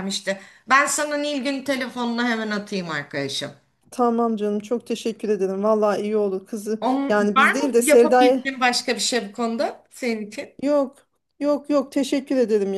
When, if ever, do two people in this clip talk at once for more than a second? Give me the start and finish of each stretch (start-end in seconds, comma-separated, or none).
6.8-8.4